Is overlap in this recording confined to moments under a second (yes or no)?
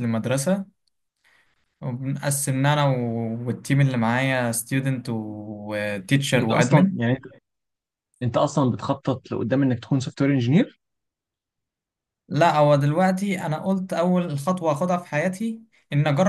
yes